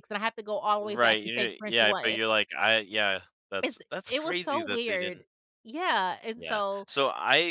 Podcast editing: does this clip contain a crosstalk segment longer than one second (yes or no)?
yes